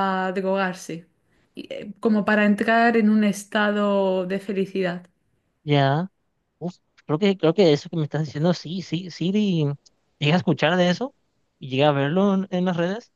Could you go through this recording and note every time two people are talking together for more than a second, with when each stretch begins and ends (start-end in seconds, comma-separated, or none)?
none